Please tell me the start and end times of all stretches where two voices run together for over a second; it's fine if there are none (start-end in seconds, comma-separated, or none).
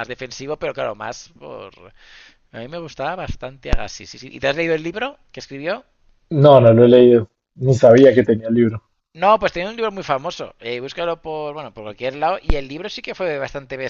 none